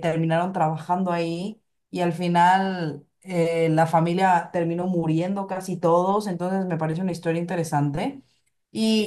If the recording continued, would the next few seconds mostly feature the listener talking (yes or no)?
no